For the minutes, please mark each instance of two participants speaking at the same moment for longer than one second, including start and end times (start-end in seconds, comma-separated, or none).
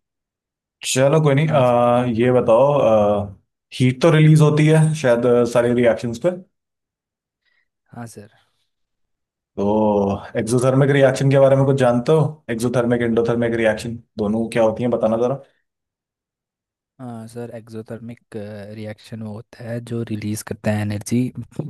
none